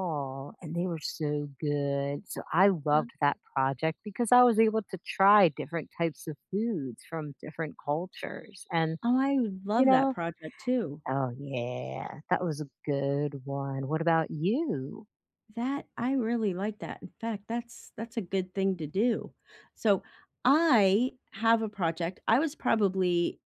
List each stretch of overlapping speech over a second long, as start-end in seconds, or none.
none